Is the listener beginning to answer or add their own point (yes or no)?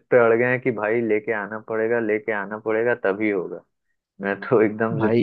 yes